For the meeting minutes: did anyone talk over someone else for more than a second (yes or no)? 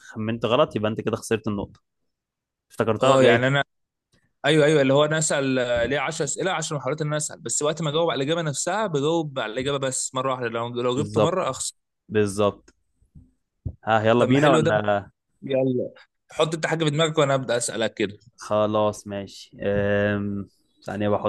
no